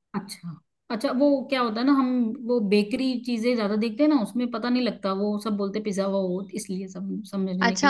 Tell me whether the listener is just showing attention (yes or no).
no